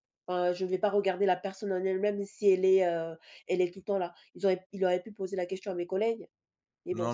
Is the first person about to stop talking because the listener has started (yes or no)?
yes